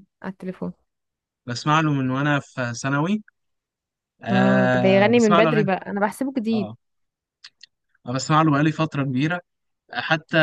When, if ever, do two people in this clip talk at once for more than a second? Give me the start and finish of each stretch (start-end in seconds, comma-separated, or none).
4.3-5.7